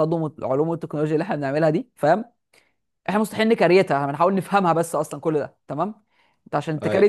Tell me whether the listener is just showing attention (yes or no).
yes